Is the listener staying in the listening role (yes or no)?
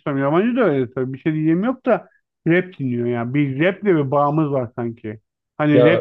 yes